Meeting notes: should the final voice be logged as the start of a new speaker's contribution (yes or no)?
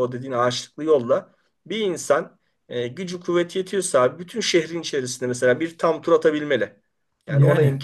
no